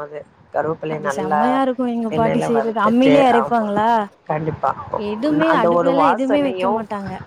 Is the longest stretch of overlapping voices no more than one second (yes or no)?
no